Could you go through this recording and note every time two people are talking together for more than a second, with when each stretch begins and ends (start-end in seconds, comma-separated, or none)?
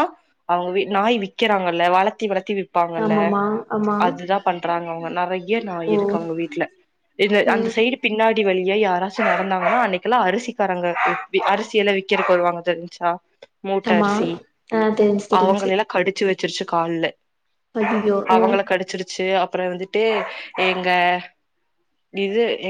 none